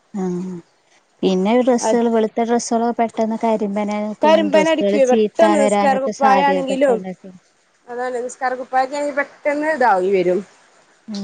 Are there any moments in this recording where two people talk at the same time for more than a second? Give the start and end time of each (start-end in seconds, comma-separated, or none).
4.2-5.6